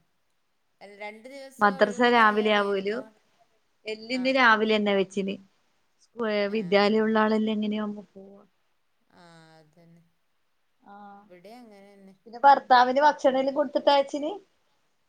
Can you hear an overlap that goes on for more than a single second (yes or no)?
yes